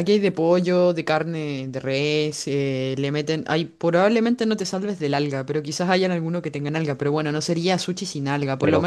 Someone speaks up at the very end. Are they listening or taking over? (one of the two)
listening